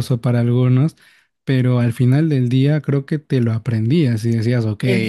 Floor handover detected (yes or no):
yes